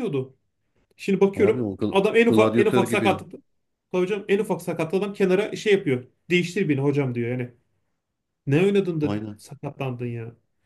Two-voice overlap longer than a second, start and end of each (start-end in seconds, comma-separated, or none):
1.3-3.2